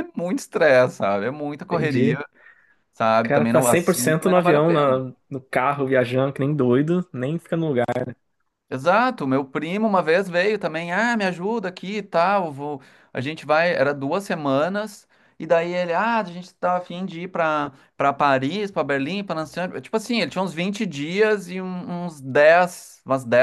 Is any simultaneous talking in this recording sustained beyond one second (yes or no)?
yes